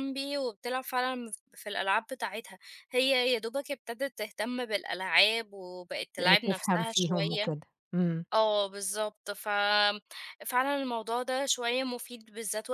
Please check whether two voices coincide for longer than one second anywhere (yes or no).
yes